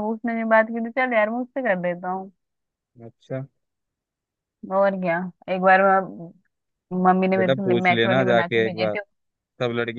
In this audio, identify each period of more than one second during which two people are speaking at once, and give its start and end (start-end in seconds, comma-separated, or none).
7.3-8.9